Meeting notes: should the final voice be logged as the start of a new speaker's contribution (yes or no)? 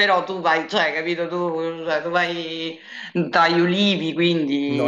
yes